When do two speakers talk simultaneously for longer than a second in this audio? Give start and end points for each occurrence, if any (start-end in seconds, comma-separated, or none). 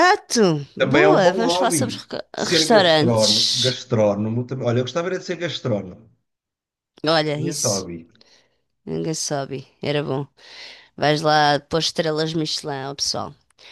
0.8-3.8